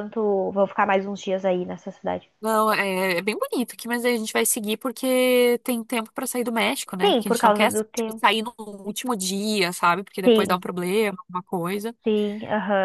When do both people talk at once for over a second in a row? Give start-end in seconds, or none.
7.0-8.3